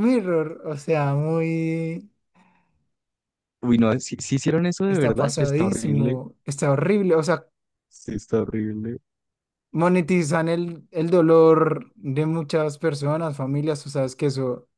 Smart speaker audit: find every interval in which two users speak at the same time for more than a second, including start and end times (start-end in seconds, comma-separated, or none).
4.9-6.2